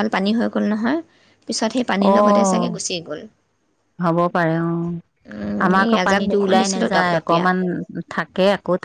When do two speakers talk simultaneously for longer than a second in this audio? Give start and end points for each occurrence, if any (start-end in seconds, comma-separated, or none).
5.3-7.4